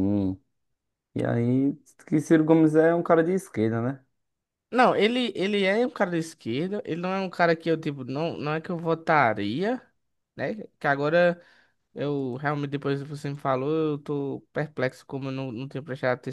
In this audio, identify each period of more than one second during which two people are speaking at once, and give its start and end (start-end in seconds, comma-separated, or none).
none